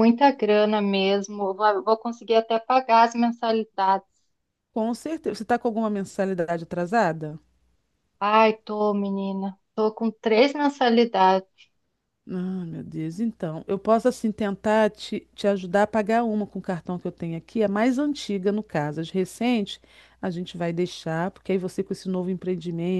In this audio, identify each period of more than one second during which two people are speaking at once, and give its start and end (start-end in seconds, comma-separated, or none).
none